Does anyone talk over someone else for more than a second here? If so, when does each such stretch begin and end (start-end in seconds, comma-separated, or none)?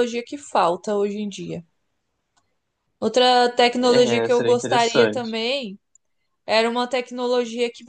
3.8-5.4